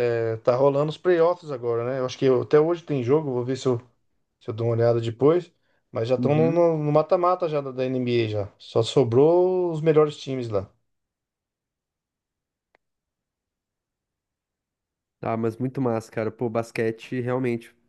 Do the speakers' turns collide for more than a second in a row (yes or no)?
no